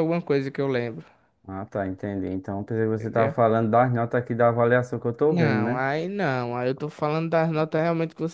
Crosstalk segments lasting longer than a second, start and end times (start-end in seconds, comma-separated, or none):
none